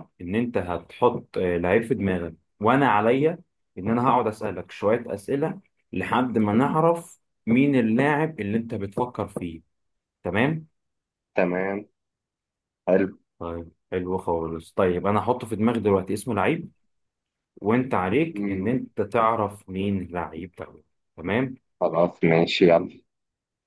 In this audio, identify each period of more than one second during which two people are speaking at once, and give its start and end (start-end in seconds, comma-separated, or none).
none